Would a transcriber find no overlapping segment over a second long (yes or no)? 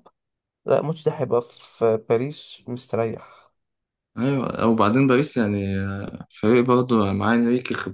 yes